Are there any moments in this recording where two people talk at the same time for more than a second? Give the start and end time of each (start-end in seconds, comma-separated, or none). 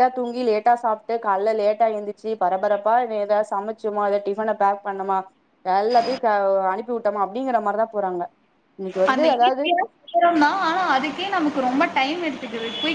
none